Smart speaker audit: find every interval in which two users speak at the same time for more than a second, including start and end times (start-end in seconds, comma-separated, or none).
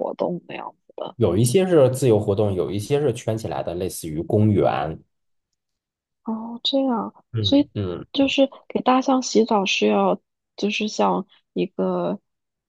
none